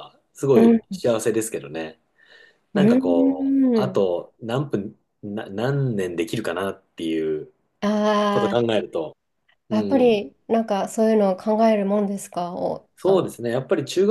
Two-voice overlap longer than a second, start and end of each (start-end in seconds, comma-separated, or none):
2.7-4.0